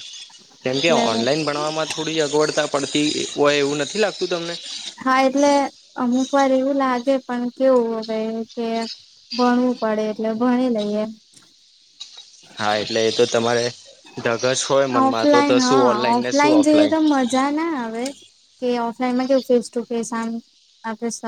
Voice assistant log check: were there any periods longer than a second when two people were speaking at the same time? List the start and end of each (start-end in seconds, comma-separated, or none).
15.1-16.5